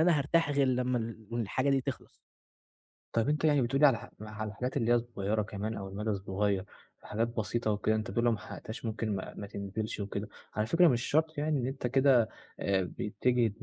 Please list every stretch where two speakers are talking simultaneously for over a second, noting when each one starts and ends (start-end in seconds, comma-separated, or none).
none